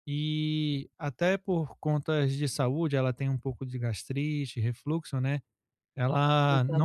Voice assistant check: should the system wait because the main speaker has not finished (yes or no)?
yes